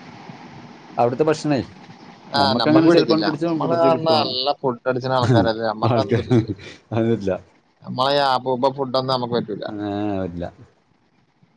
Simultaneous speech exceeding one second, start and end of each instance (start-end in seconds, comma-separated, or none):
2.4-4.3